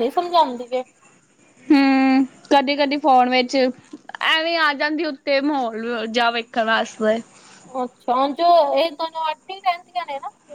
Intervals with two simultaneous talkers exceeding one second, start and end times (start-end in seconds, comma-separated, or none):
none